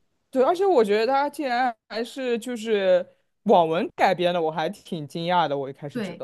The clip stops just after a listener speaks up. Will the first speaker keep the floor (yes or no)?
no